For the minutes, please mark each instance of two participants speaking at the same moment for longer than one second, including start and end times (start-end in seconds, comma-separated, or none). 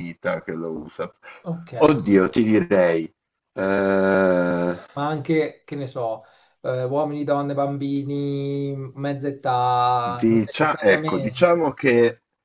10.2-11.7